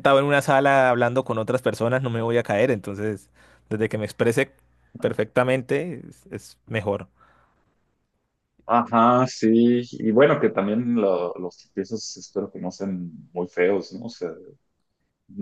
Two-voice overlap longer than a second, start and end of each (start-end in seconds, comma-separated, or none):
none